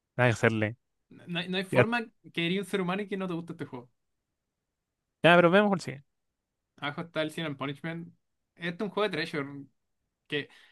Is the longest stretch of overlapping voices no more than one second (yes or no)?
yes